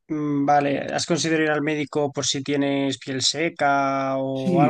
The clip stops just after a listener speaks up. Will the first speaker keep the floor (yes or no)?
no